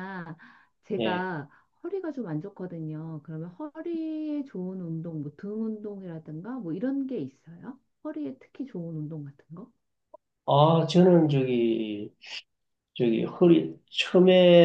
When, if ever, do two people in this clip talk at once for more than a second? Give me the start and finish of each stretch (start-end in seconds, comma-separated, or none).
none